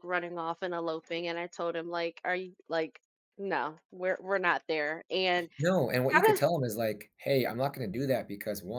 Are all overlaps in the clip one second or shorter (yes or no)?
yes